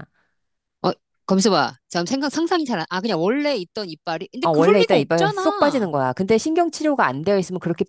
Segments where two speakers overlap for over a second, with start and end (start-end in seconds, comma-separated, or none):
4.4-5.9